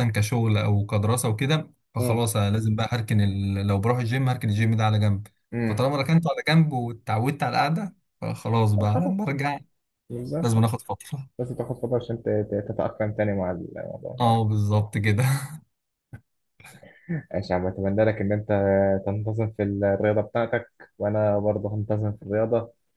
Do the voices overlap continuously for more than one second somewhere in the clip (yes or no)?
no